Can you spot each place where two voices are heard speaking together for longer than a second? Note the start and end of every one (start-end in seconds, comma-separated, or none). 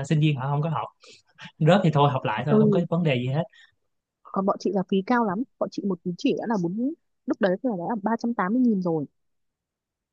none